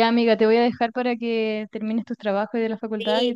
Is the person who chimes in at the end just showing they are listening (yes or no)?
no